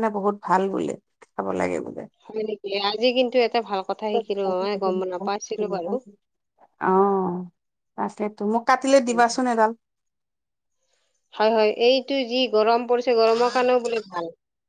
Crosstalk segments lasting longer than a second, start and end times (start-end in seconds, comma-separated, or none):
none